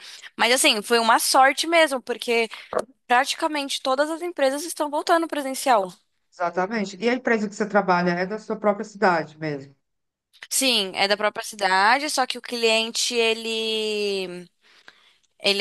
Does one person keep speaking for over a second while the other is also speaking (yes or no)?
no